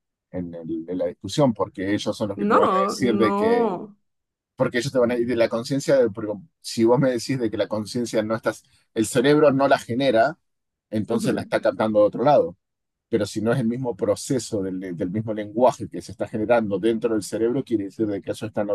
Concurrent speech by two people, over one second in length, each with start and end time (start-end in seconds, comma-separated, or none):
2.5-3.7